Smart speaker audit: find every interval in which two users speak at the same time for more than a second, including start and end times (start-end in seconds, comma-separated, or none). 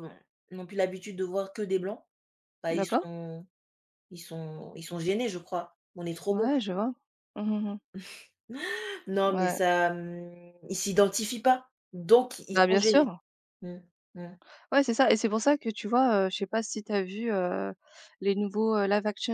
none